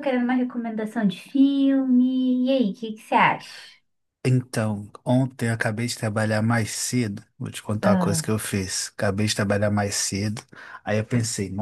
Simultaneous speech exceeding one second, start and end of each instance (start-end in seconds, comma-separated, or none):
none